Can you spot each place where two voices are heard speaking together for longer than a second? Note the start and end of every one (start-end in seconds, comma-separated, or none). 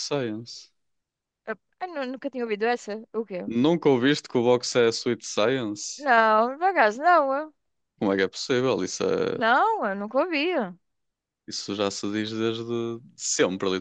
none